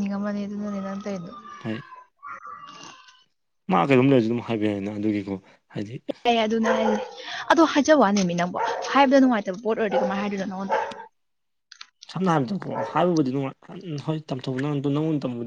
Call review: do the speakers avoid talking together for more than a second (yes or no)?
yes